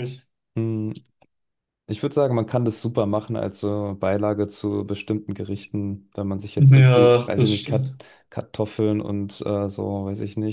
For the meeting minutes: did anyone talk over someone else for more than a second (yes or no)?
yes